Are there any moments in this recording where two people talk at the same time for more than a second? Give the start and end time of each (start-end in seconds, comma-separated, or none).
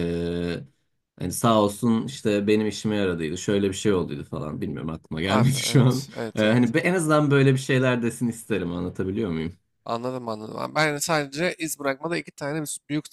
5.3-6.7